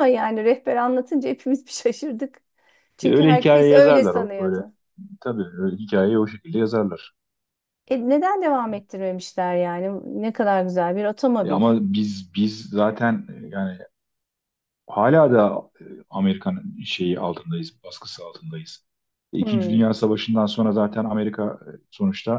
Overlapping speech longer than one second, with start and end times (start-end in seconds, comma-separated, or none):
3.0-4.6